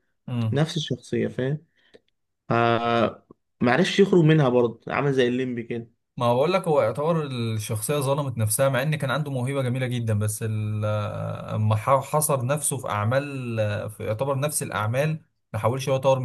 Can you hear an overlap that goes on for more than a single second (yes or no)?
no